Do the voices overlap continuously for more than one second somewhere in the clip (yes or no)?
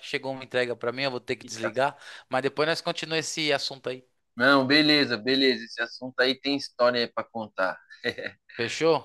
no